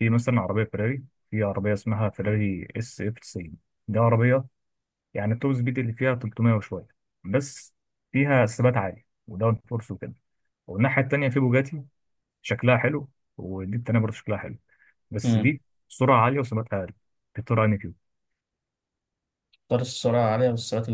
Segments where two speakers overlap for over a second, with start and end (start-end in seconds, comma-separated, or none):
none